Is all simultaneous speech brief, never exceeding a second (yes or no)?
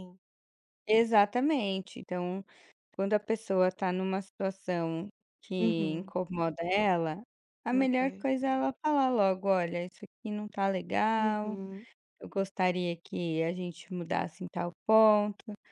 yes